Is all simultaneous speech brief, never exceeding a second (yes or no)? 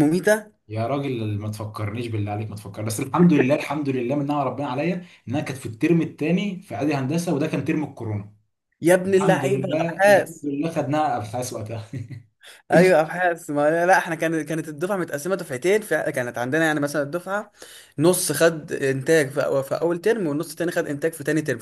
no